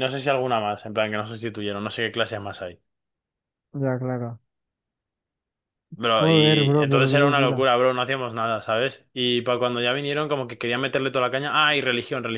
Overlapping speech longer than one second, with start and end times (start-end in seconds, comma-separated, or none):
6.2-7.7